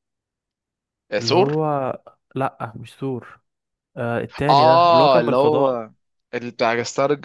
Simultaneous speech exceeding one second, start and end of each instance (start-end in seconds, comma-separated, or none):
4.5-5.8